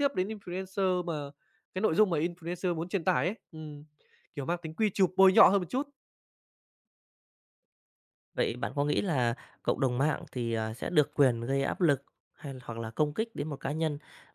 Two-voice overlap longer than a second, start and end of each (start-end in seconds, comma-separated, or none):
none